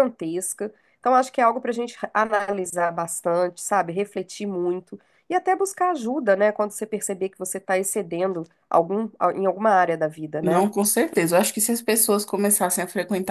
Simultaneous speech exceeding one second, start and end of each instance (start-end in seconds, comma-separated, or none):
none